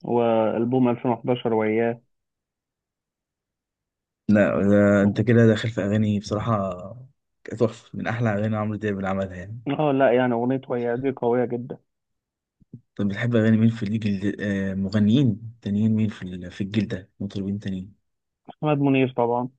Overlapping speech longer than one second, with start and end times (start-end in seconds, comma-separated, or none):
none